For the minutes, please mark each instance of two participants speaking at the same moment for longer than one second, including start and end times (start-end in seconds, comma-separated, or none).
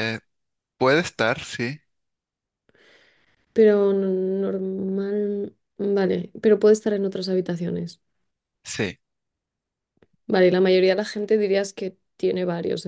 none